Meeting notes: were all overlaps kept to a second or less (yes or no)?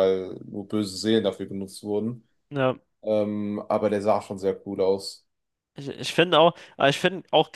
yes